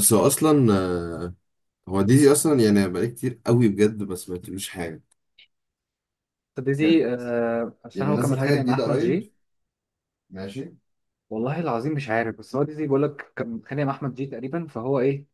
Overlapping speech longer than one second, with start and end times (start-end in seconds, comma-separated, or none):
7.9-9.2